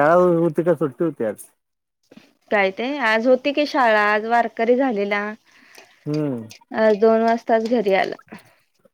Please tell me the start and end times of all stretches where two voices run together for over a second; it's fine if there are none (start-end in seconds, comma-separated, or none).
none